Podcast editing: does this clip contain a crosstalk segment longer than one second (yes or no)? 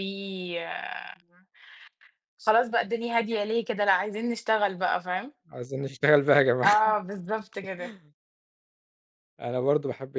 no